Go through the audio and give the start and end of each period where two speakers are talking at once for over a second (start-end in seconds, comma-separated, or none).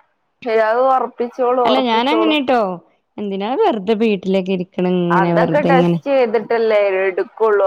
none